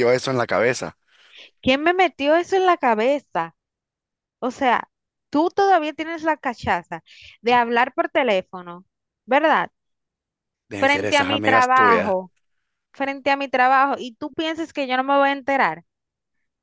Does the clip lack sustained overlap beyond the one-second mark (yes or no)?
no